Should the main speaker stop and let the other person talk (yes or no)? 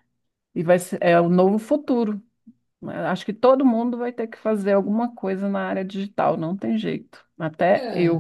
yes